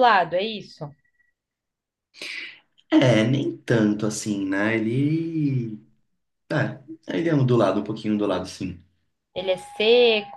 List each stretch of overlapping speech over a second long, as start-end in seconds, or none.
none